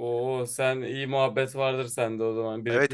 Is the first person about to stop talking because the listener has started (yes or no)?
yes